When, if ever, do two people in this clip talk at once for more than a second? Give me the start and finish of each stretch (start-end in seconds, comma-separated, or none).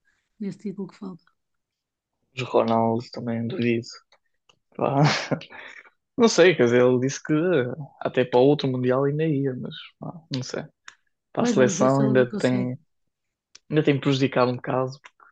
11.4-12.7